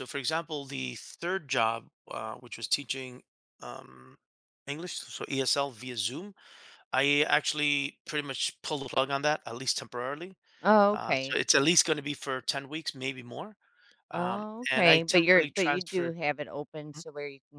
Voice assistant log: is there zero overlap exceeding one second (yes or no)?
no